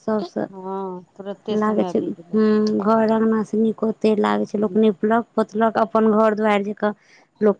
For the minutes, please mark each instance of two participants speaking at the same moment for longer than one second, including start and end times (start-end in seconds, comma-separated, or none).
none